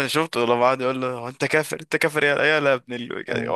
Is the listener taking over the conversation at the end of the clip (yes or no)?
no